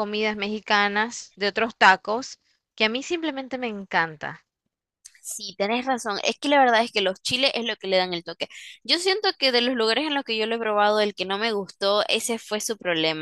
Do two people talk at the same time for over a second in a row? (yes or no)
no